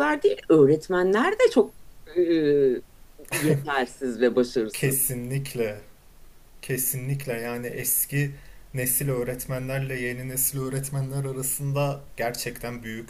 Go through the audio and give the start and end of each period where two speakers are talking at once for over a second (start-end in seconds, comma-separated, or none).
none